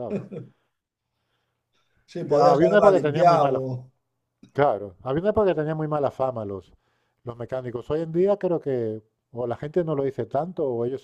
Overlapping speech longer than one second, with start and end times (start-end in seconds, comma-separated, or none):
2.3-3.6